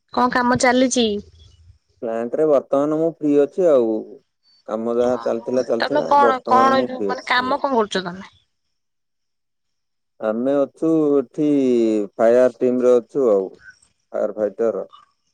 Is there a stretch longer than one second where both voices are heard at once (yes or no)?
yes